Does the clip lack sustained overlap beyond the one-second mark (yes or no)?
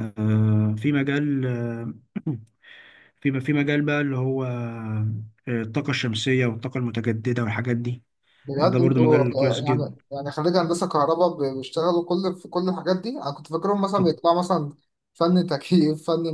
no